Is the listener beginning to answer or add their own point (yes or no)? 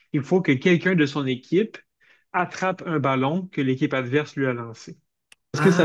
yes